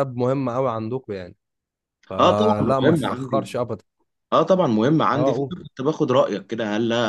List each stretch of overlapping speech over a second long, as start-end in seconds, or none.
2.2-3.5